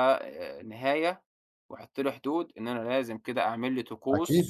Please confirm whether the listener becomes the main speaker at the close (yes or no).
yes